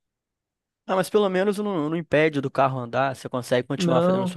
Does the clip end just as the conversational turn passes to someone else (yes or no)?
yes